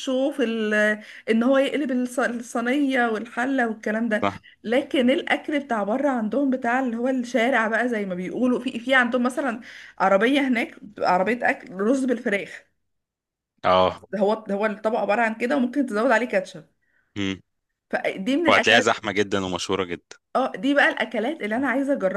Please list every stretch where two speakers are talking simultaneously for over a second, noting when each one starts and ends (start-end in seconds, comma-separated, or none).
none